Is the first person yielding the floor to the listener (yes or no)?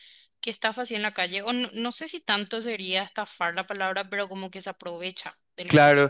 yes